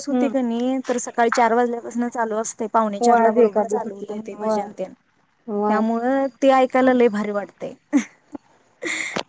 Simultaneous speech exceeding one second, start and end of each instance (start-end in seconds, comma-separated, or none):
3.0-4.6